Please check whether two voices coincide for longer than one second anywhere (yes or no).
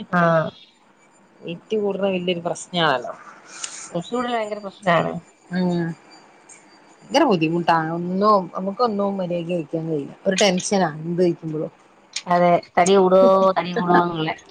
no